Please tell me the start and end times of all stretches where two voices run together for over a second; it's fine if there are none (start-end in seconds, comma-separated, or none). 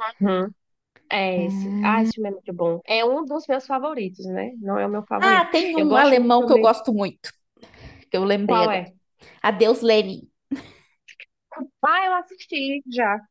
5.2-6.8